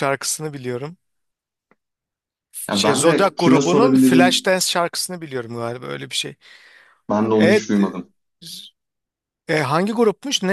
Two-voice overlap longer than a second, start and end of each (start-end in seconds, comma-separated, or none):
2.7-4.5